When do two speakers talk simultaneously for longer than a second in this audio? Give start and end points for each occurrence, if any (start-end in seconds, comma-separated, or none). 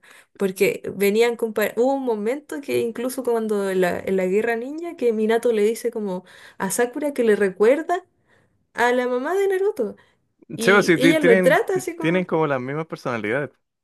10.6-12.3